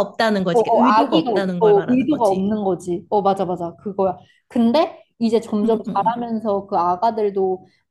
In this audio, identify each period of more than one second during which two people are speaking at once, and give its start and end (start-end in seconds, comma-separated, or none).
0.5-2.5